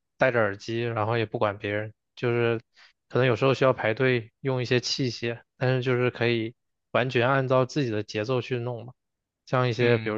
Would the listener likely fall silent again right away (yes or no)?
yes